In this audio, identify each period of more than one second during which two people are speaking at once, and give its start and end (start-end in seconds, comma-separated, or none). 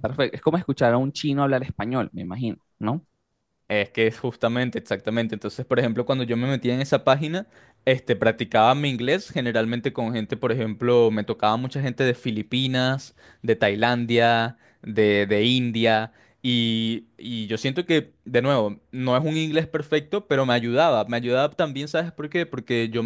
none